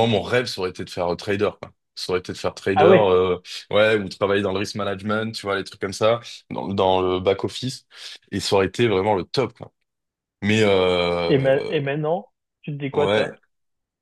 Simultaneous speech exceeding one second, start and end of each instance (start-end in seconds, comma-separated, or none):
none